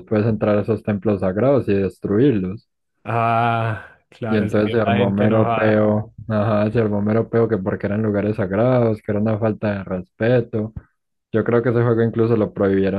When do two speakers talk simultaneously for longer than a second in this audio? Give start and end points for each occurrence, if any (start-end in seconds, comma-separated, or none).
4.3-5.9